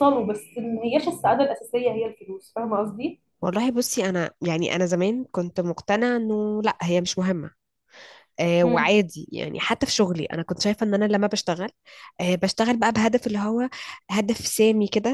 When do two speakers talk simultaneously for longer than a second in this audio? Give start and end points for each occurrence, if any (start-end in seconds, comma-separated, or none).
none